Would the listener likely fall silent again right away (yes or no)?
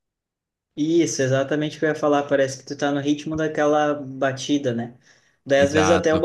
yes